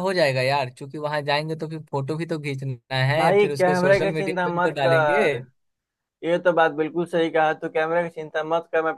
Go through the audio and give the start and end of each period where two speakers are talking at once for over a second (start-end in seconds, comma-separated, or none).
3.2-5.3